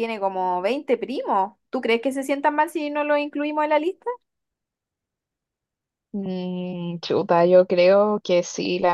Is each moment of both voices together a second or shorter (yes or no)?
yes